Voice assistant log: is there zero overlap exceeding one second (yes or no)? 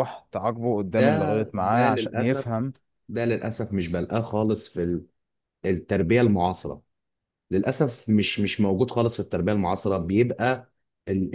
no